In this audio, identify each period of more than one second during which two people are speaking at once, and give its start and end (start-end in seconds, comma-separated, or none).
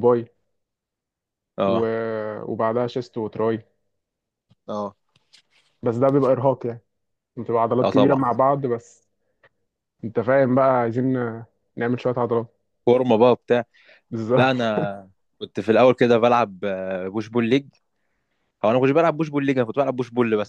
none